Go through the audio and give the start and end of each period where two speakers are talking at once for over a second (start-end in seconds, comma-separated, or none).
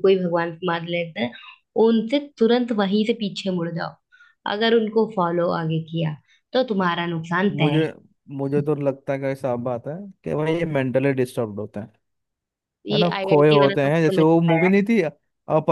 12.9-14.7